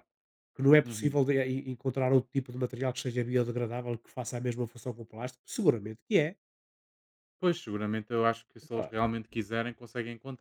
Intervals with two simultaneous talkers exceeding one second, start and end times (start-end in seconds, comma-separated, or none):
none